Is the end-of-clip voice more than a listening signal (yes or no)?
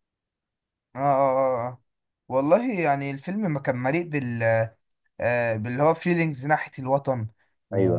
no